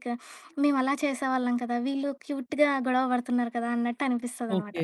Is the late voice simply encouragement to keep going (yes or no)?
yes